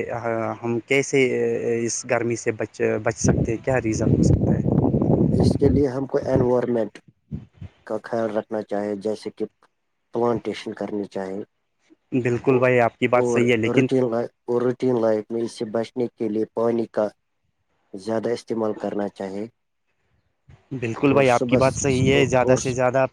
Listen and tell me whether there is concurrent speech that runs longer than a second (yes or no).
yes